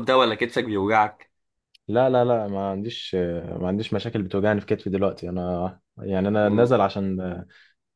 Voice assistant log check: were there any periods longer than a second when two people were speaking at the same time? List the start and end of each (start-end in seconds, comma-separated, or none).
none